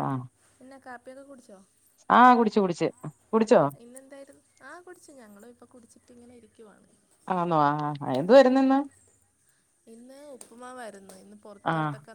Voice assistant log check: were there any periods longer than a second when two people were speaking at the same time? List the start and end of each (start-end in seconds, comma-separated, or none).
none